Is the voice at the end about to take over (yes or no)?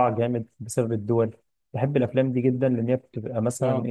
no